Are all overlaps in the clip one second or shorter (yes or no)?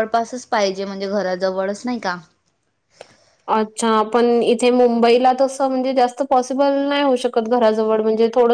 yes